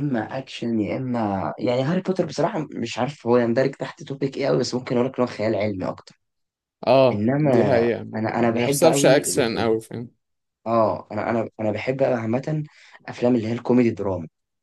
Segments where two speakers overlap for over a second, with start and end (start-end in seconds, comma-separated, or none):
8.4-9.7